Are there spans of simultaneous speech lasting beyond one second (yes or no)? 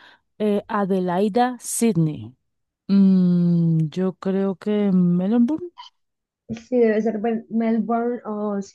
no